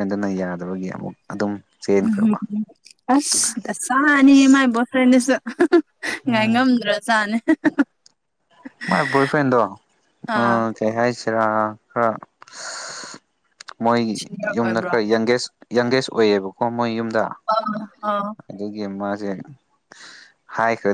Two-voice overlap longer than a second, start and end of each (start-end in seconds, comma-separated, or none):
none